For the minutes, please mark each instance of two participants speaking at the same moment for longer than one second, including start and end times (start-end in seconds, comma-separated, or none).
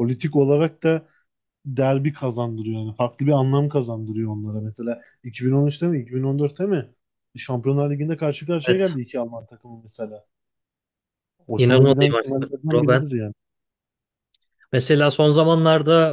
11.6-13.0